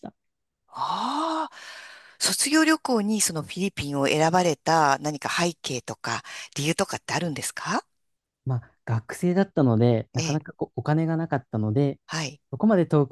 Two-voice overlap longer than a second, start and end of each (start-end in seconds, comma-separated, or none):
none